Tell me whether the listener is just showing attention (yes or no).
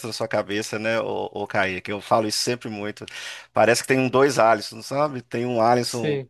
yes